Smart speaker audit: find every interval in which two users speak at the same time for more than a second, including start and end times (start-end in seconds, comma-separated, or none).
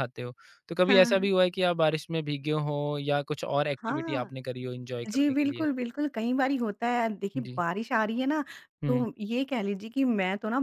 none